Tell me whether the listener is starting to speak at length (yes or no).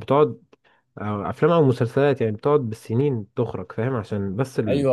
yes